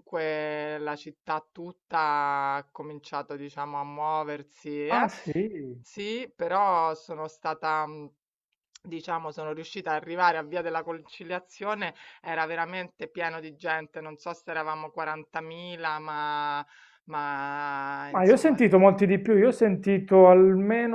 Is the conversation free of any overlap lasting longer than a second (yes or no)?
yes